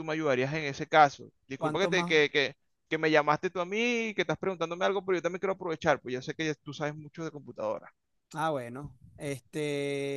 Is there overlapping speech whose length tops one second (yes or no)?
no